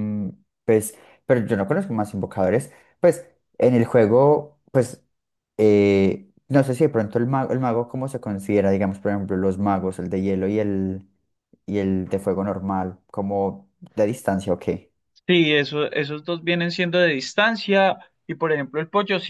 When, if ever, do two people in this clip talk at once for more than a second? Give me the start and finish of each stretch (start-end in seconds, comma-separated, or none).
none